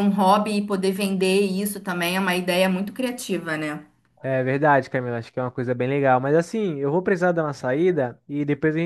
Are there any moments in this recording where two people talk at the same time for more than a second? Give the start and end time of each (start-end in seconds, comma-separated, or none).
none